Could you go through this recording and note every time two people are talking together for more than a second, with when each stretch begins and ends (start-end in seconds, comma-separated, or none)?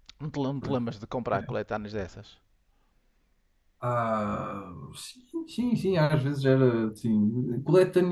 none